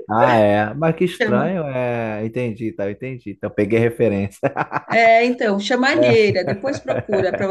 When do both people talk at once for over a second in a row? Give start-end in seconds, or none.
none